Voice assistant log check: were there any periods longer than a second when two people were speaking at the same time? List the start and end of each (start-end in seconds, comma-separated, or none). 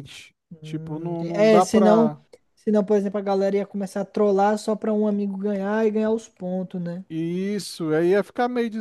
0.6-2.2